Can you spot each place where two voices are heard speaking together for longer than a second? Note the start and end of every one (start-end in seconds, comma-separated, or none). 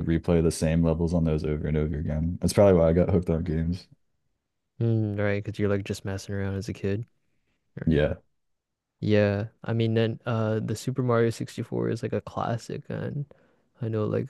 none